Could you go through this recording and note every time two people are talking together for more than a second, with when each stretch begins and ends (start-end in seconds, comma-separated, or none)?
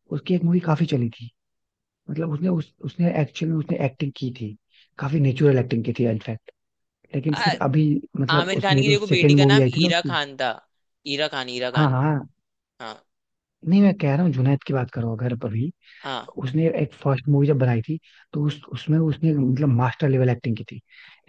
8.3-10.2